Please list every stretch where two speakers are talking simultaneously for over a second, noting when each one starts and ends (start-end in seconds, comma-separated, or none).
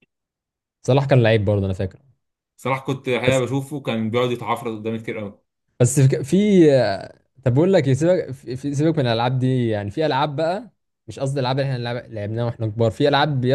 none